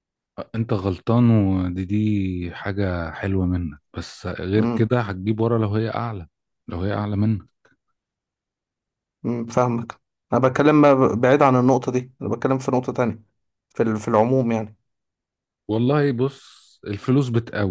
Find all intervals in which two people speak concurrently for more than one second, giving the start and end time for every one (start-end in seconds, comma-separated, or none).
none